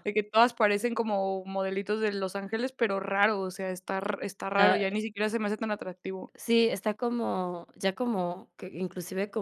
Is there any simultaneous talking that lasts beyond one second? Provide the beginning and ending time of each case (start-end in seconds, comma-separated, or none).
none